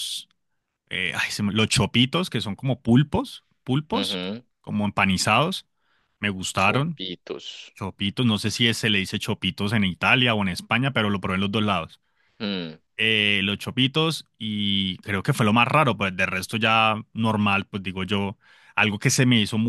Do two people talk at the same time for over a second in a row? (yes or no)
no